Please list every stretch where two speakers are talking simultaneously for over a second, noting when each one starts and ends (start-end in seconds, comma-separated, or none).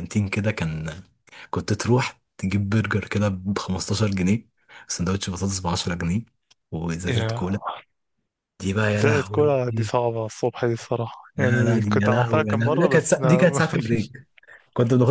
11.3-13.6